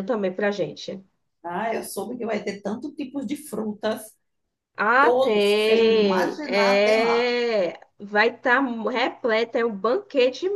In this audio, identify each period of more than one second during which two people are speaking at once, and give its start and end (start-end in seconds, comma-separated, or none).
5.0-7.3